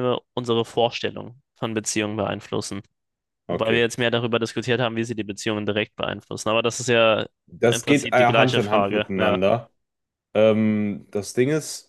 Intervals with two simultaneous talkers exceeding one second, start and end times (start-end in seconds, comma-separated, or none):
7.7-9.4